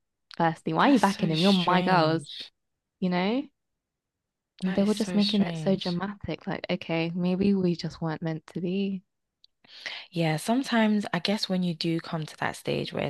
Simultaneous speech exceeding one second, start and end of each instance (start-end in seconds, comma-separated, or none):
0.8-2.2, 4.7-6.0